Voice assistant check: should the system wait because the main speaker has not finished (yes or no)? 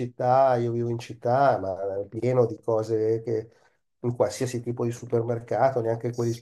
yes